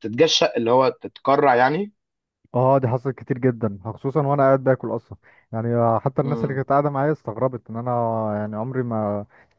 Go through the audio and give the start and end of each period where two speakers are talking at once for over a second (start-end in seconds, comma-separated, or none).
none